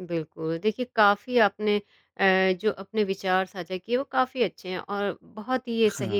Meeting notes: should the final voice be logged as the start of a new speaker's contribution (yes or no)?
no